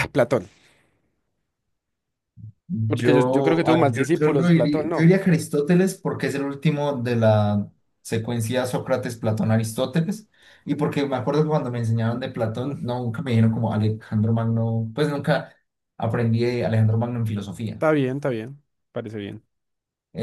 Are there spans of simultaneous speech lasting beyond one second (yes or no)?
yes